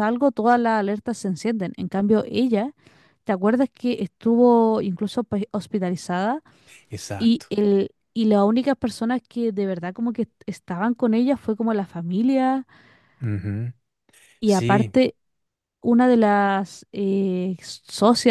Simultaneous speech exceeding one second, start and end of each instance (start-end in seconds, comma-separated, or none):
none